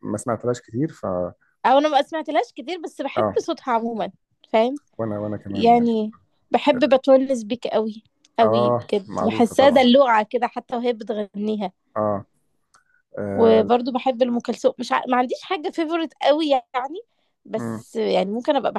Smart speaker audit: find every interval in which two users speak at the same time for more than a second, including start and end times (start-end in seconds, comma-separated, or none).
8.4-9.8